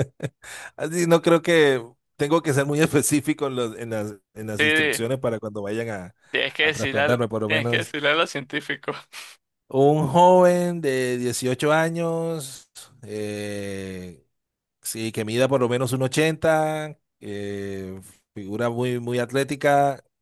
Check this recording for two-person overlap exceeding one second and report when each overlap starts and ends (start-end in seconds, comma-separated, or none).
6.6-7.9